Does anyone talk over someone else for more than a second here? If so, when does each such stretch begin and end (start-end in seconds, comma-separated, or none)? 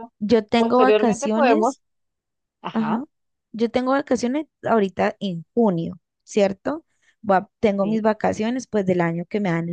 0.6-1.8